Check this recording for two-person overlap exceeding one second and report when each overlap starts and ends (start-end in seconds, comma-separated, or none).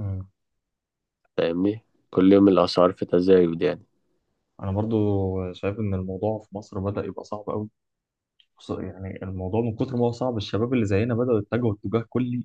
none